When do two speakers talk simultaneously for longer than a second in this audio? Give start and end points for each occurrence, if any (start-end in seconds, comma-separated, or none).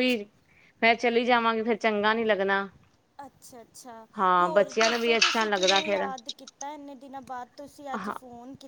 4.4-6.1